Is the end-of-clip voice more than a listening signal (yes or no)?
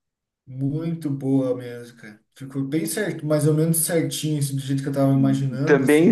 yes